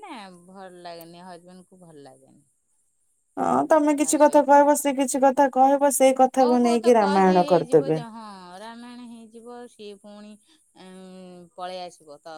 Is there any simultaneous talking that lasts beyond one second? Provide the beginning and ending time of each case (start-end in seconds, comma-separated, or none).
6.4-8.0